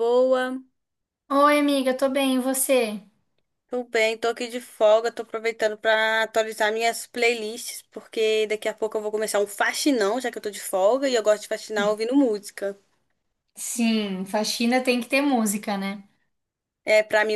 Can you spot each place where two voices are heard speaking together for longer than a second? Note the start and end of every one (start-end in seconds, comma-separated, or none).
none